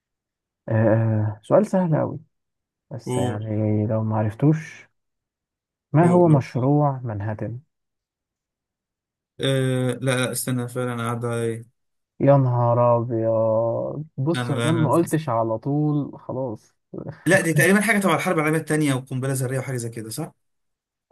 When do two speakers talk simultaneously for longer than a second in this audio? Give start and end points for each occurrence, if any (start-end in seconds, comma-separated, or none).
none